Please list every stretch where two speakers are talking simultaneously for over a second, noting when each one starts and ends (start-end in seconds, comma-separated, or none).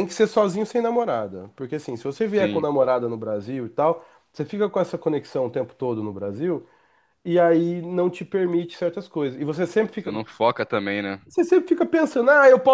none